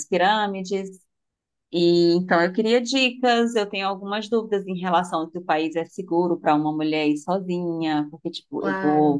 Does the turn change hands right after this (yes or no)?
no